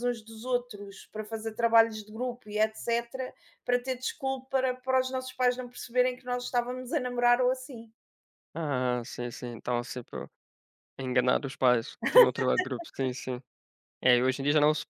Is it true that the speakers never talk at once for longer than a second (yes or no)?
yes